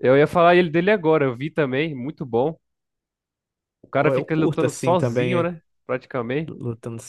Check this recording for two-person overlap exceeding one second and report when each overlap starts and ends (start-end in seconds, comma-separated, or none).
4.0-5.5